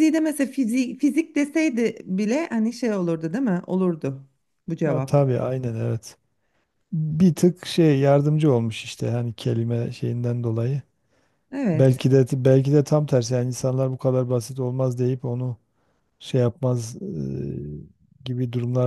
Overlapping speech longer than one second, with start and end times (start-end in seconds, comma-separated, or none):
none